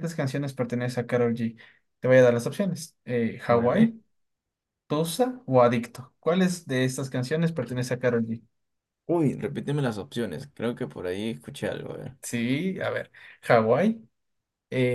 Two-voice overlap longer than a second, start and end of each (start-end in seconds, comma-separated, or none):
none